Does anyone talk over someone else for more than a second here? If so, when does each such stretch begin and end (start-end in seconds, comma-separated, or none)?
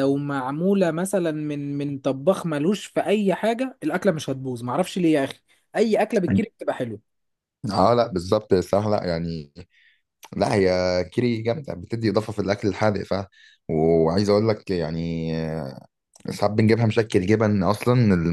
none